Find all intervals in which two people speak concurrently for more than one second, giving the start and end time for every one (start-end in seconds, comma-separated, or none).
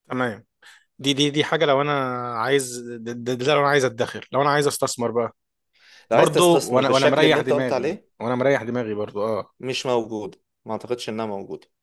6.1-8.1